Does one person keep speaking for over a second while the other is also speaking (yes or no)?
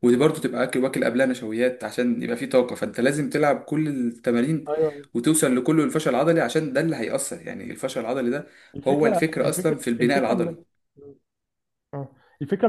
yes